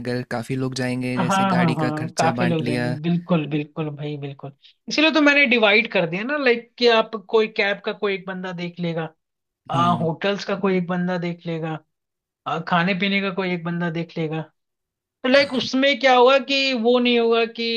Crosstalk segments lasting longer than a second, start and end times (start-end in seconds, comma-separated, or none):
1.2-2.9